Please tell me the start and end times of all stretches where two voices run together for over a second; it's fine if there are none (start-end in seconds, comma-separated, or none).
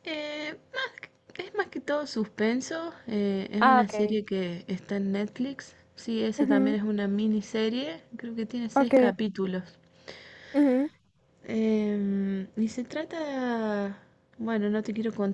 none